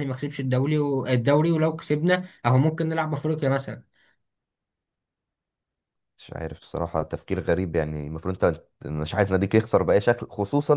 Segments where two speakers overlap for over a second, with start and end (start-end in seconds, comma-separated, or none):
none